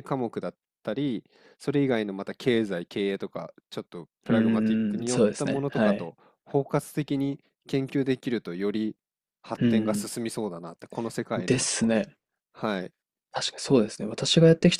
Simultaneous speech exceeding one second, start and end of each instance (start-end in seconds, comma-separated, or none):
4.3-6.1